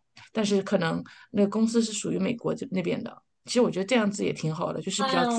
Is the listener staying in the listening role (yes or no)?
no